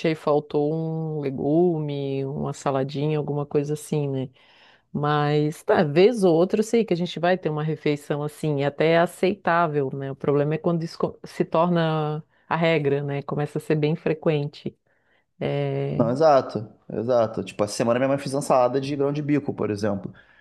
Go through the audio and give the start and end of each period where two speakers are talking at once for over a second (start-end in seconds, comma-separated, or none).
none